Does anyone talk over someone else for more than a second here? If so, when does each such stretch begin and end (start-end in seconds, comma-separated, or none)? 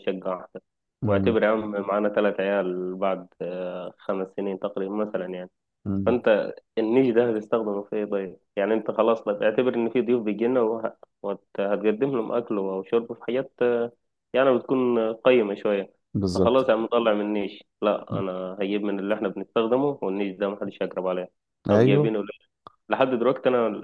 none